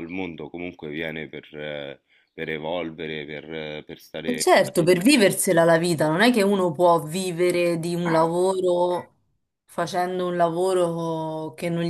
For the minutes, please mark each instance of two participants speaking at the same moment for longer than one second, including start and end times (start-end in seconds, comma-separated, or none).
none